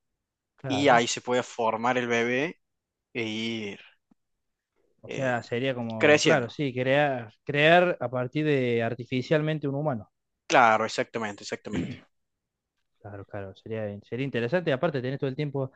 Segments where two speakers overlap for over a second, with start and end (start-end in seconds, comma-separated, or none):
none